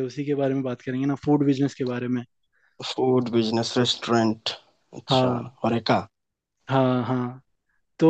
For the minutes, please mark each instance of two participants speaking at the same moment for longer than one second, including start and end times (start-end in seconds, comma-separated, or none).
none